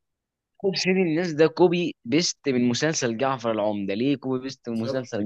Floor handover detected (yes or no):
yes